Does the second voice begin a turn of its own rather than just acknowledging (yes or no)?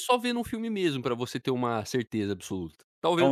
yes